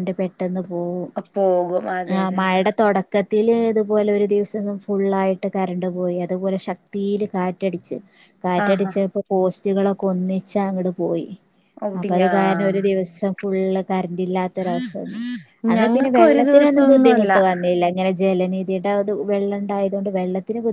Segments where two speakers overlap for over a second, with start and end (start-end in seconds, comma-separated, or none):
15.8-17.3